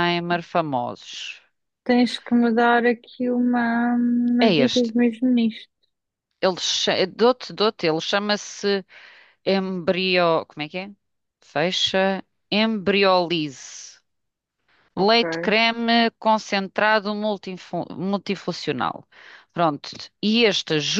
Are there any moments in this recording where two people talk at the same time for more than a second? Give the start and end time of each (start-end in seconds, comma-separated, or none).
none